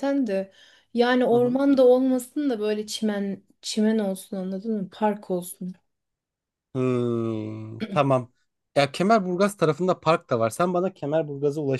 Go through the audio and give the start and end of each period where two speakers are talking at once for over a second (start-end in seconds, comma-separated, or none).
none